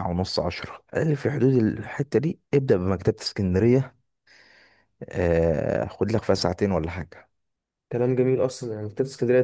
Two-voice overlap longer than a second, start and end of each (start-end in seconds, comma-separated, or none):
none